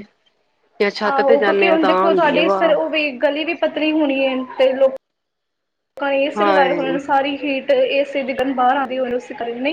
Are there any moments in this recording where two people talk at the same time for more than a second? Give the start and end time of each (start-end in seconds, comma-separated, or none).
1.1-2.7